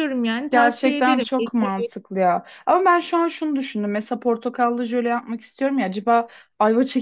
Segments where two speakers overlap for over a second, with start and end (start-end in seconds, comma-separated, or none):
0.5-1.8